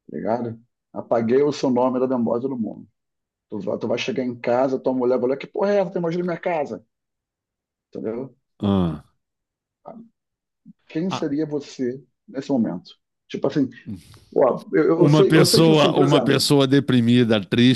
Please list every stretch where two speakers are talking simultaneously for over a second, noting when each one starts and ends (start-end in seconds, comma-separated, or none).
14.9-16.5